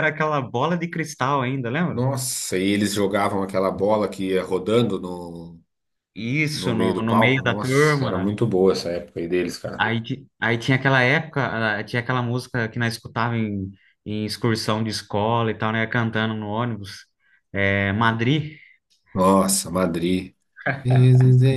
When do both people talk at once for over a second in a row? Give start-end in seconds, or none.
6.5-8.4